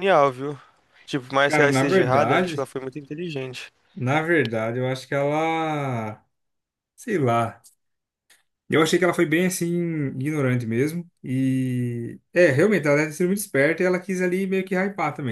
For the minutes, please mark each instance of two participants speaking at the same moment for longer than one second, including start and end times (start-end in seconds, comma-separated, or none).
1.4-2.7